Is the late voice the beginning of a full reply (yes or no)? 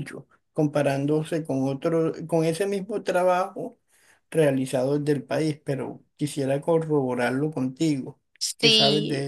yes